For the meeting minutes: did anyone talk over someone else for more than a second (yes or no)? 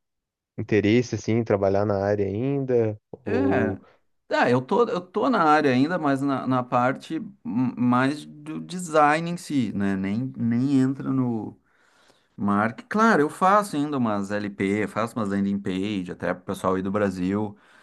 no